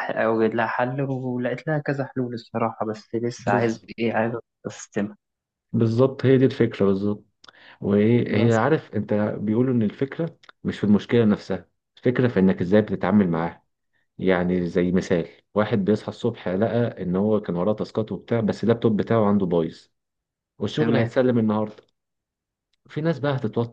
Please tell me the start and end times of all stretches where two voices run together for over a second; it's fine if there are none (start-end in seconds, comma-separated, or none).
none